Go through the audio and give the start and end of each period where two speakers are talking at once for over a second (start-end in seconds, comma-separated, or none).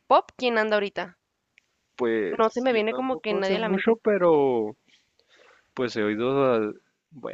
2.4-4.0